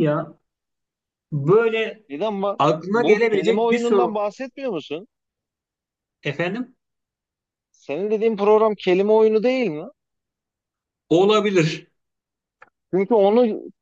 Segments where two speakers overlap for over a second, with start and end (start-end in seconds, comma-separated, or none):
2.6-4.2